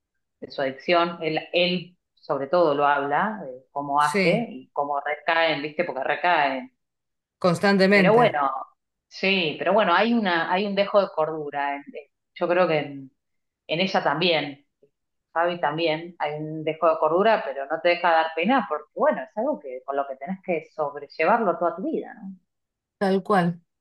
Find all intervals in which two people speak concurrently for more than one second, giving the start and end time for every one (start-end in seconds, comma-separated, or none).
none